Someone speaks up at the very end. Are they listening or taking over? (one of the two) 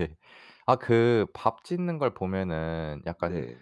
listening